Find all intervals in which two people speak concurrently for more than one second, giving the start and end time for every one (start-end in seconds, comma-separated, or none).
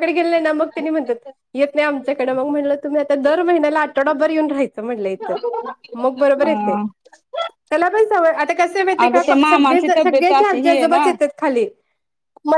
9.0-11.0